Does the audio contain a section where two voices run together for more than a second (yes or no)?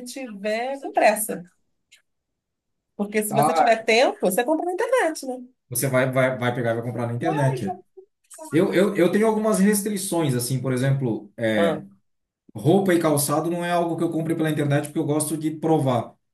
no